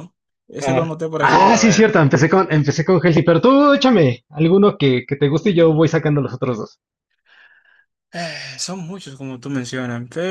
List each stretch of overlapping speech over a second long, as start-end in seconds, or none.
0.6-2.0